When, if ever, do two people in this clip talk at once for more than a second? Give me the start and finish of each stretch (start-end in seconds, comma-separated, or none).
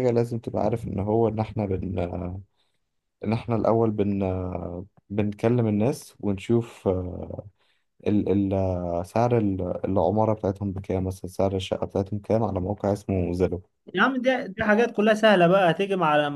none